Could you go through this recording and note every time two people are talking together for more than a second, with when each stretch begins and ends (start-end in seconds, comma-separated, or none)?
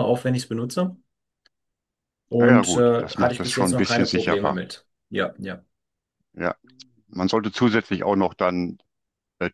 2.4-4.6